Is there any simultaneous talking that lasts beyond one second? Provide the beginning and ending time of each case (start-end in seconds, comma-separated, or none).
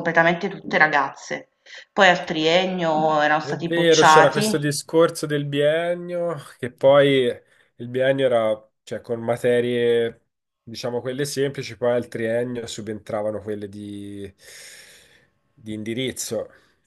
3.4-4.7